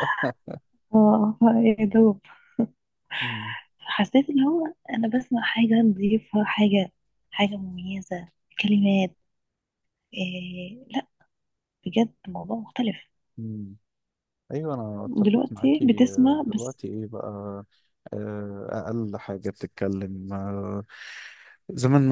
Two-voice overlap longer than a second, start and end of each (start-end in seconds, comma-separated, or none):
15.2-16.8